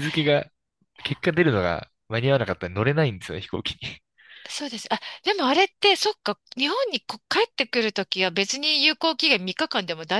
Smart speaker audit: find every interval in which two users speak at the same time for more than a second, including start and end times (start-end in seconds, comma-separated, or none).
none